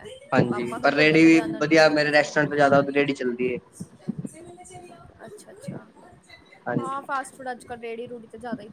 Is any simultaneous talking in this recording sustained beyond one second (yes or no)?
yes